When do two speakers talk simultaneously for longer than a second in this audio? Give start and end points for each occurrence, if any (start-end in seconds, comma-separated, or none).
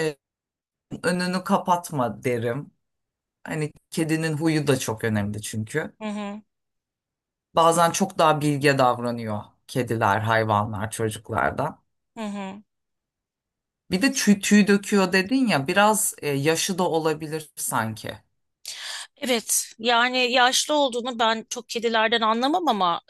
none